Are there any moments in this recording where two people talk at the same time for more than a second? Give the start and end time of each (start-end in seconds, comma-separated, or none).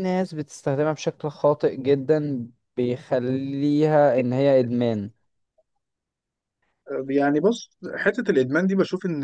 none